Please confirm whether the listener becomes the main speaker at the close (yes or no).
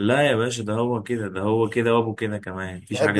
yes